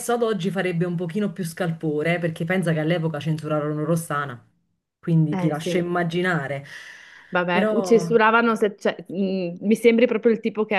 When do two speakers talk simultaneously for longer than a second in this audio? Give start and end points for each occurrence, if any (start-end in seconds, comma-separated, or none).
none